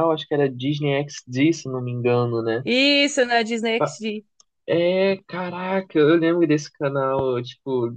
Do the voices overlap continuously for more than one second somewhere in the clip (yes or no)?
no